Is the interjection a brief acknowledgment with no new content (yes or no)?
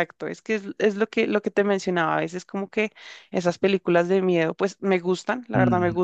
yes